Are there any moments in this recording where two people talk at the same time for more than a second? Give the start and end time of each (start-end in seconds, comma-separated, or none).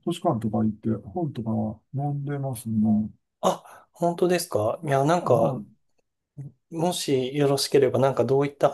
none